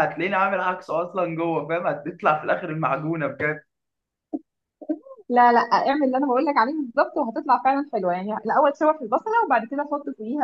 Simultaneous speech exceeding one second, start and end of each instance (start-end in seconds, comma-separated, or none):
none